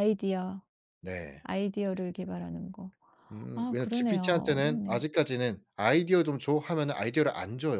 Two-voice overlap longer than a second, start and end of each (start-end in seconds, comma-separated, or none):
3.5-5.0